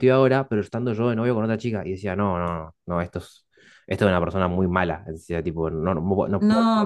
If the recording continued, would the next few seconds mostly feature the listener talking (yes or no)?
yes